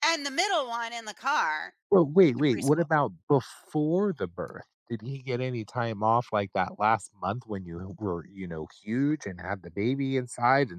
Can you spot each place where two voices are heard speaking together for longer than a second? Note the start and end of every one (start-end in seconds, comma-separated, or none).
none